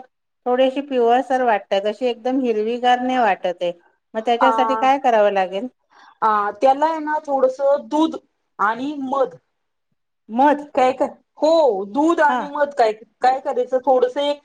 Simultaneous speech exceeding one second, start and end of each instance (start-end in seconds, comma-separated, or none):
none